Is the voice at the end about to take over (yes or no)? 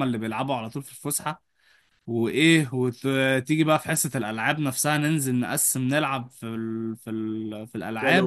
yes